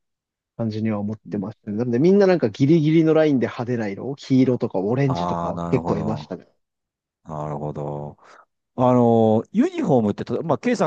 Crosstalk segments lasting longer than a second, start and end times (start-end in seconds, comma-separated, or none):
5.1-6.3